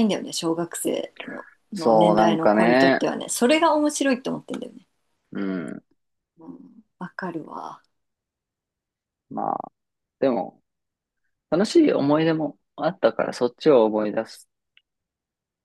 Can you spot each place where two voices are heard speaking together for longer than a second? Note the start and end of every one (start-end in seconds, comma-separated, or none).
1.7-3.1